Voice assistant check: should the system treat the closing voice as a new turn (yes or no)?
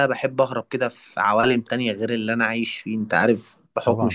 no